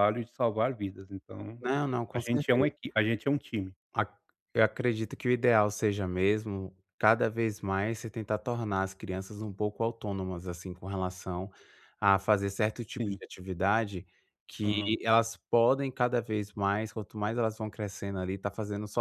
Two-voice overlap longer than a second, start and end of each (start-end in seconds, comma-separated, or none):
none